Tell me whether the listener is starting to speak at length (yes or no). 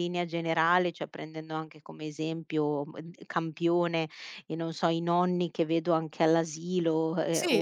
no